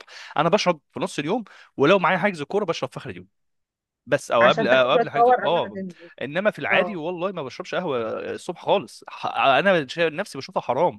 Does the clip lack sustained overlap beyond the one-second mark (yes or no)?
no